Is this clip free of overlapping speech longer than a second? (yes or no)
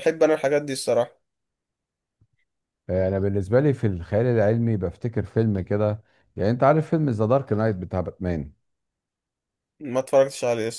yes